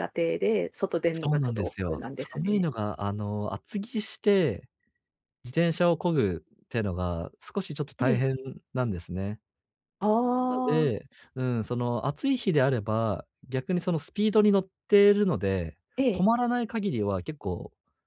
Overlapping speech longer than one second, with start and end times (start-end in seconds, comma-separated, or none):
1.1-2.7